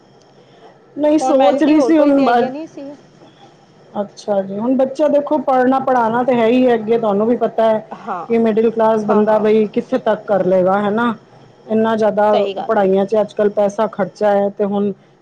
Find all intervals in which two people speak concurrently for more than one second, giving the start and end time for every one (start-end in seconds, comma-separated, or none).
1.2-2.4